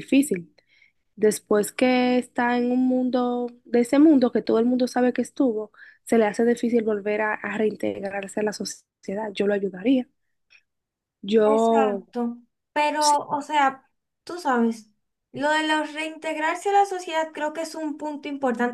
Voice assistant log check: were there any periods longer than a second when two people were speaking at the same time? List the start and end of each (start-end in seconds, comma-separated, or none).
none